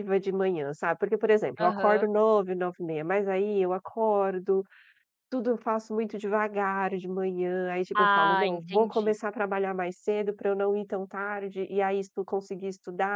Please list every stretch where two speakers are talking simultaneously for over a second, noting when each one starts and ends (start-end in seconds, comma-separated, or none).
7.9-9.2